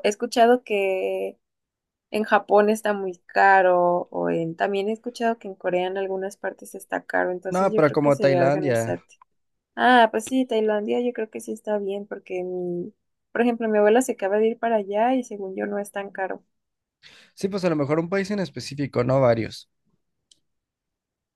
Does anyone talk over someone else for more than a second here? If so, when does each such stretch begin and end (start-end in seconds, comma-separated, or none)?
7.5-9.0